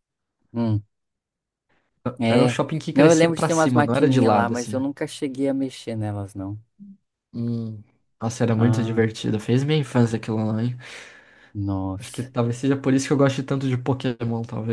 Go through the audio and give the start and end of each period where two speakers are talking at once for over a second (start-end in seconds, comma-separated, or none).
2.3-4.8